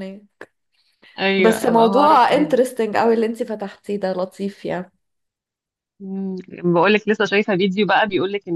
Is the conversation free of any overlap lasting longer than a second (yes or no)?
no